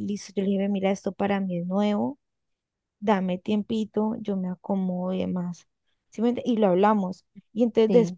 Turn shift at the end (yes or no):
no